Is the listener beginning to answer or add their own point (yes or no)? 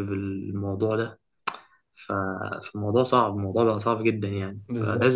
no